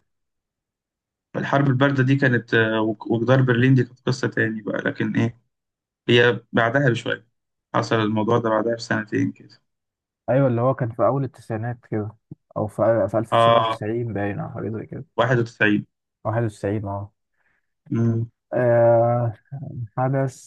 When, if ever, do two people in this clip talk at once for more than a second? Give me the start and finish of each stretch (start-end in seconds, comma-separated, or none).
none